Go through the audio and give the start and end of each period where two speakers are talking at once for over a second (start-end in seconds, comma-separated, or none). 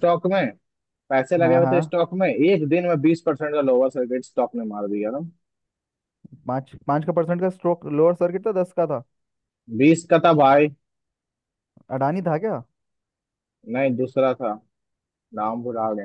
none